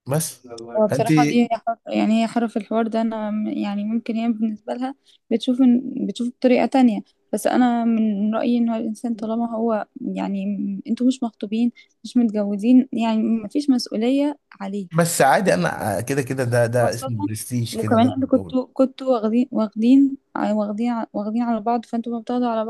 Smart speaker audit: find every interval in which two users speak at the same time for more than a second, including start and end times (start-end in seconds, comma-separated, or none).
none